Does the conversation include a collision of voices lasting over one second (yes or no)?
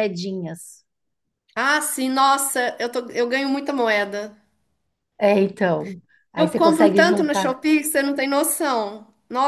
yes